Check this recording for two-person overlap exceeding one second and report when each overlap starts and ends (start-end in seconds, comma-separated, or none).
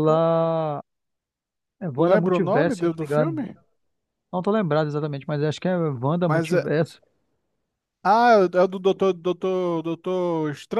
1.9-3.5